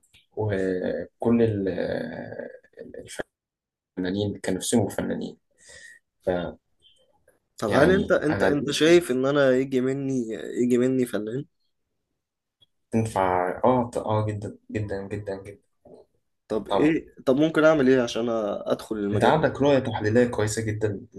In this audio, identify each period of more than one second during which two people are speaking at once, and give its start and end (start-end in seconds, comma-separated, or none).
7.7-9.1